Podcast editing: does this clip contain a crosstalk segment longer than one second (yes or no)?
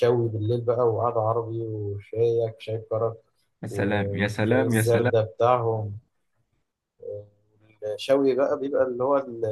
yes